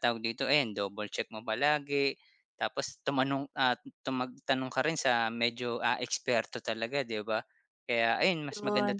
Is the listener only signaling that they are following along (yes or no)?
yes